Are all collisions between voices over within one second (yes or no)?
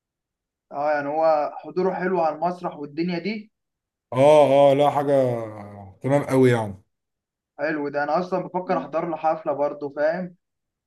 yes